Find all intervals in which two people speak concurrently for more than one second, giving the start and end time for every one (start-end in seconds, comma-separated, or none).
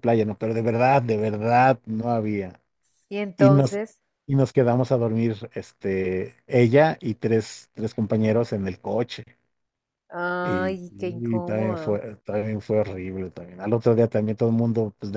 10.4-12.0